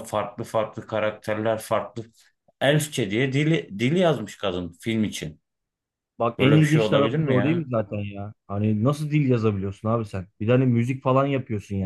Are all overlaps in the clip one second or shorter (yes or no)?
no